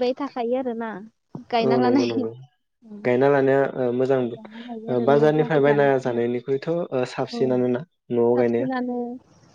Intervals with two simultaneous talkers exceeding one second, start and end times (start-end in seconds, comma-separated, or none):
4.3-5.9